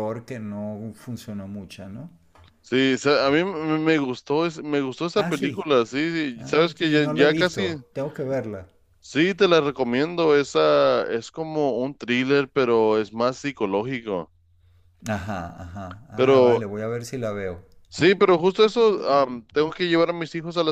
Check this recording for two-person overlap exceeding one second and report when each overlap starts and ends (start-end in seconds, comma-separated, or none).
6.3-7.8